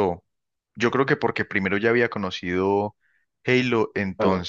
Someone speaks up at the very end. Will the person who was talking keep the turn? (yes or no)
yes